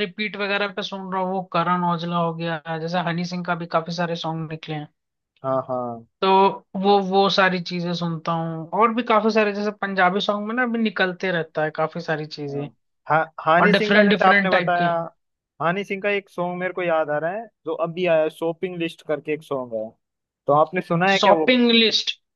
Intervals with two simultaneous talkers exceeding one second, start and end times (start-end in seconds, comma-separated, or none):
13.6-14.9